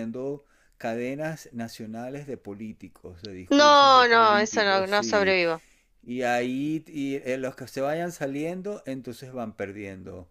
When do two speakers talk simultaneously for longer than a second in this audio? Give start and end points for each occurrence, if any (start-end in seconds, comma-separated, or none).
3.5-5.4